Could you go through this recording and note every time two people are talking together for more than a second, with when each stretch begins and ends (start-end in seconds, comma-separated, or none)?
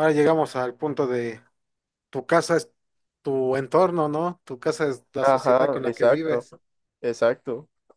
5.2-6.5